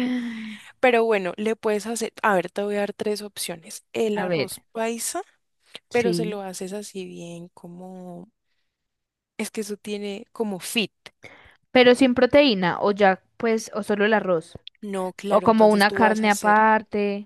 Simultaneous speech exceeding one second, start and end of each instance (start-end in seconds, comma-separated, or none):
15.3-16.6